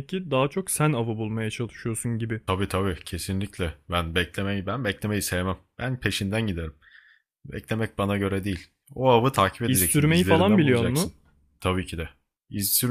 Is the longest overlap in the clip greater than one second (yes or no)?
yes